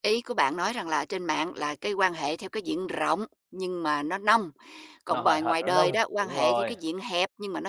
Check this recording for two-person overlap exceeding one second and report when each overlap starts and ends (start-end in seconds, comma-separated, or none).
5.1-6.7